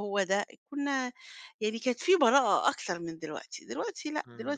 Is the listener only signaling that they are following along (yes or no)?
no